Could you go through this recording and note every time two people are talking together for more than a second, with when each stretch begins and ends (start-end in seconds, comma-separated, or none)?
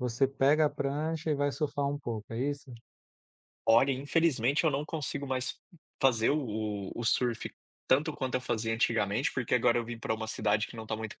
none